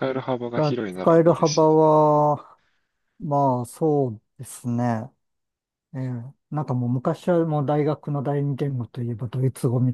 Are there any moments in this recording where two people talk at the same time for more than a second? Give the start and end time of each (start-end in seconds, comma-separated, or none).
0.5-1.9